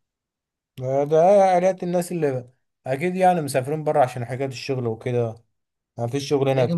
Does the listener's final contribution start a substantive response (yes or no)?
yes